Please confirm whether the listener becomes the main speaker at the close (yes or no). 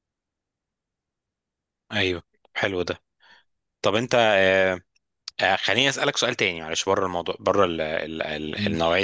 no